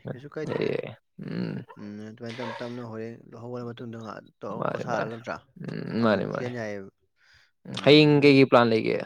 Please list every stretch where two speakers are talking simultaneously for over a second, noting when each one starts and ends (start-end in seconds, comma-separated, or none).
none